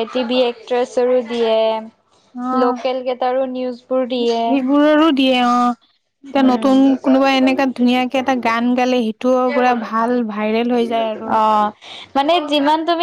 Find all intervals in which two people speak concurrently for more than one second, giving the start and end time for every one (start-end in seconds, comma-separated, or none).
none